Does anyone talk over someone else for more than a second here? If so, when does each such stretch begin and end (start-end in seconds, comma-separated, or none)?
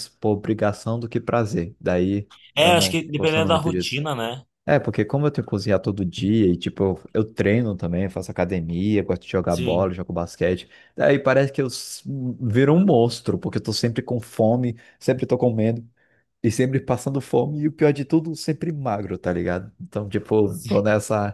2.5-4.0